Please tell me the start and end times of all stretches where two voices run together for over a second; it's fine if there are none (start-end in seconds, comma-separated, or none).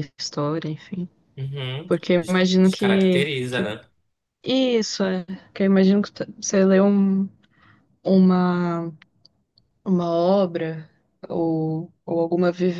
1.9-3.7